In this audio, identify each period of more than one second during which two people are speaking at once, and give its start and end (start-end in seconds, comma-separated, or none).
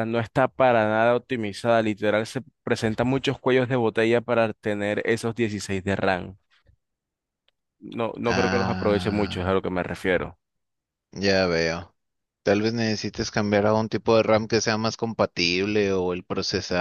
8.2-9.6